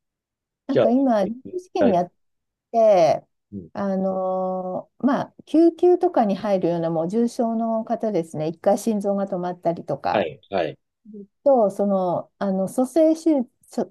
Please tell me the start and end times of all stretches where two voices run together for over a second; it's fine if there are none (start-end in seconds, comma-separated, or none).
0.7-2.0